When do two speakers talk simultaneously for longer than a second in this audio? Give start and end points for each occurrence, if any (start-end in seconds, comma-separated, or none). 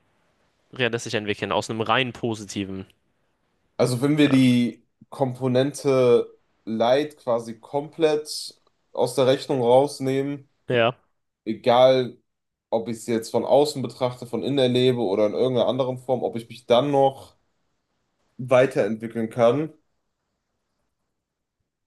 none